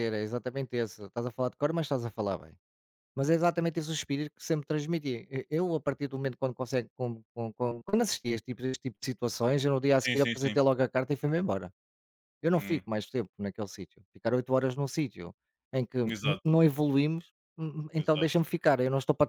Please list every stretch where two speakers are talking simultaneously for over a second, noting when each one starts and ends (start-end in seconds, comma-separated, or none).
none